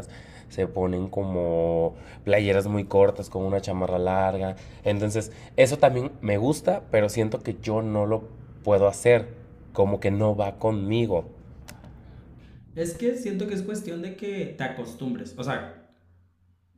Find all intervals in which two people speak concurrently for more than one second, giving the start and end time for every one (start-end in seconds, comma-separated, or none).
none